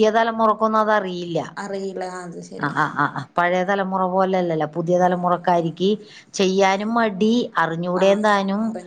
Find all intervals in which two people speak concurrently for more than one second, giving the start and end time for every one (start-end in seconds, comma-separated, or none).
none